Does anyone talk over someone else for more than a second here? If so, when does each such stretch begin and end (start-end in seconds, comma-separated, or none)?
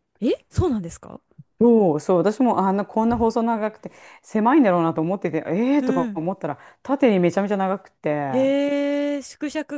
none